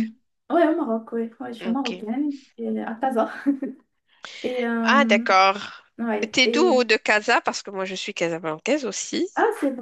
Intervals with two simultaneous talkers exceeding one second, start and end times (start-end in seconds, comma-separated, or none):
none